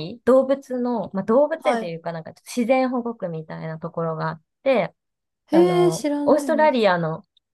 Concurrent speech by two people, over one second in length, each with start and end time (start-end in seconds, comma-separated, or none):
5.5-6.9